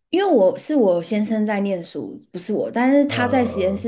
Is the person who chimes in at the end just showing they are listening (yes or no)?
yes